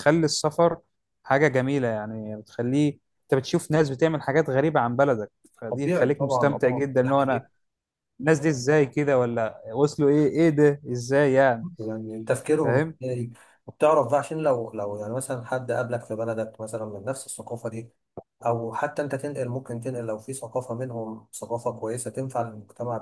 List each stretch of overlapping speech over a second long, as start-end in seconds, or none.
5.7-7.4